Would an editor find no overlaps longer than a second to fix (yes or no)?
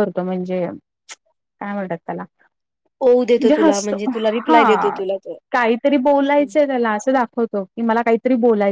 yes